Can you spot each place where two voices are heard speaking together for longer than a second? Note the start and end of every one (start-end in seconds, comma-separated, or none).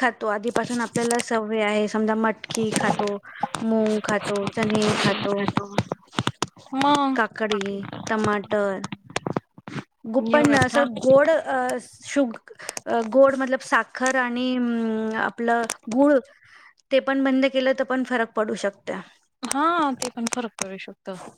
none